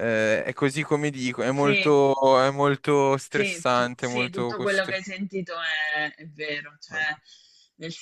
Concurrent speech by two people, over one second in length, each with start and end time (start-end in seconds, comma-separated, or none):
3.3-5.0